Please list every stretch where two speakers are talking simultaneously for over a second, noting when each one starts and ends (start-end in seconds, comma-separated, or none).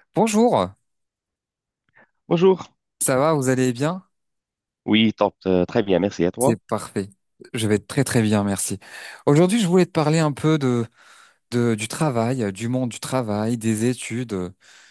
none